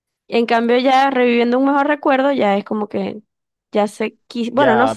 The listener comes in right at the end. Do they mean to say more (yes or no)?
yes